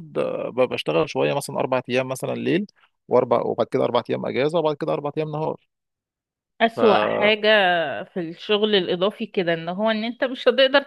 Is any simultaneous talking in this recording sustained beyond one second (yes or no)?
no